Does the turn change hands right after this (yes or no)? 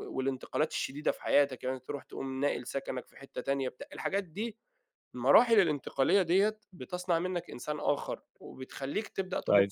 no